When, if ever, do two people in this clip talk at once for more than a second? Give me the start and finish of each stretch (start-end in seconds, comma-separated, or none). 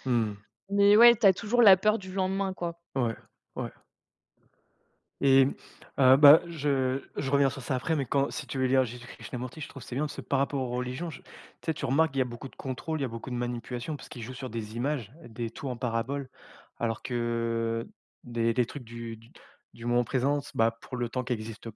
none